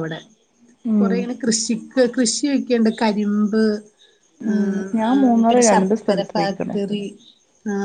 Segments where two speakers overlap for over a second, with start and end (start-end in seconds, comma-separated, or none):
4.5-6.8